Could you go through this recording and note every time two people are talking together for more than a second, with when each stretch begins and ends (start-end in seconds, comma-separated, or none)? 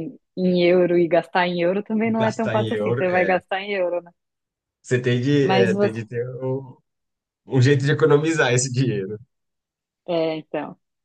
2.1-3.4